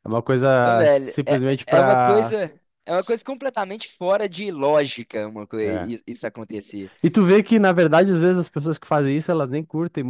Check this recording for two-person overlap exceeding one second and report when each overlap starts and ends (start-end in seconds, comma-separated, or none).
0.6-2.4